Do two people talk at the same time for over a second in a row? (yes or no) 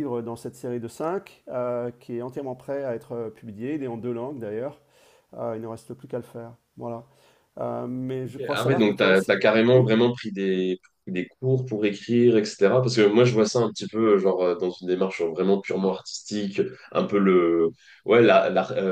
yes